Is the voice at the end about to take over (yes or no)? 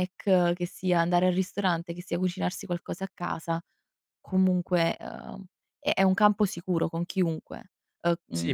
yes